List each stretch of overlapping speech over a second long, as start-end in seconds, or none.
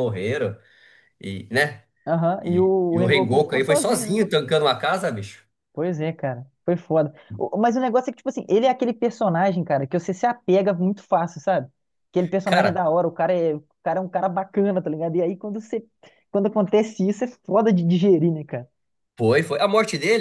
2.4-4.2